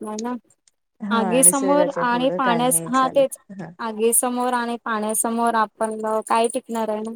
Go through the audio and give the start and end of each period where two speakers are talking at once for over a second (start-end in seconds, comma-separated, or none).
1.2-3.4